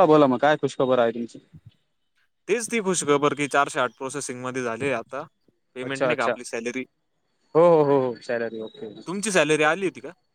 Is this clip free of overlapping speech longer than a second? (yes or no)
yes